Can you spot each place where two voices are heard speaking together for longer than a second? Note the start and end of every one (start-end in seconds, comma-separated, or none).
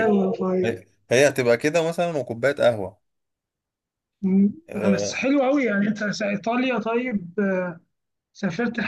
none